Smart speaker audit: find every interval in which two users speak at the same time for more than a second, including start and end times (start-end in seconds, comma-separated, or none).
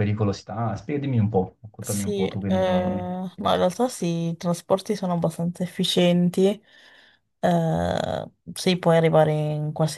1.8-3.1